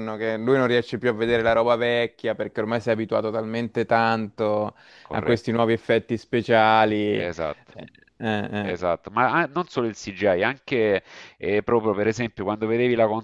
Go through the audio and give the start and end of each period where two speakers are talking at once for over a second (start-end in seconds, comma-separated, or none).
none